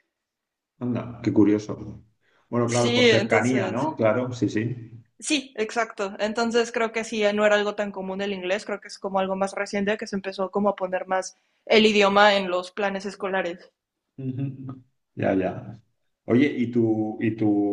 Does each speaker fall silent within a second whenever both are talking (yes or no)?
no